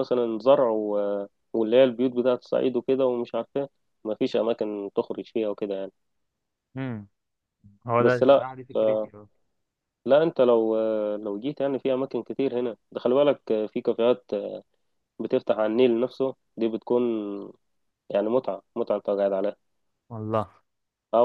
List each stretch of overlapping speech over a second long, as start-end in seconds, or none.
none